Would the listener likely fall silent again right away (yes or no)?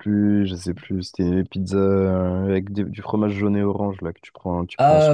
no